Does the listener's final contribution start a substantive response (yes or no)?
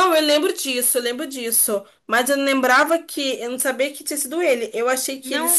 no